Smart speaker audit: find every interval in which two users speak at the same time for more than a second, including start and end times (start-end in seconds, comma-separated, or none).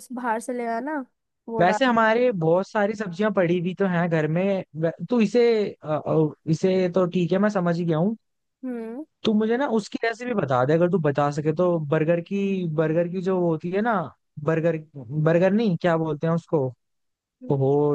none